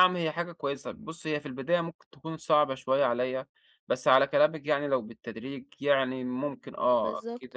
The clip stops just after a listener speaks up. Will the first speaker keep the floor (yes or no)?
yes